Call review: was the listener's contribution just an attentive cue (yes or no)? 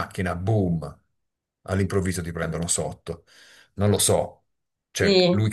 yes